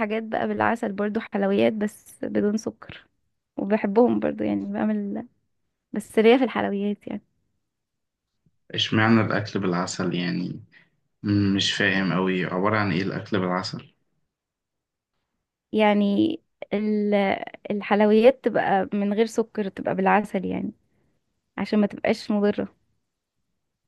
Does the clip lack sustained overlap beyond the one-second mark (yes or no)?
yes